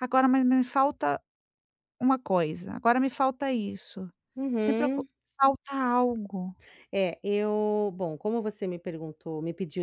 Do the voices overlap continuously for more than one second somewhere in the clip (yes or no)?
no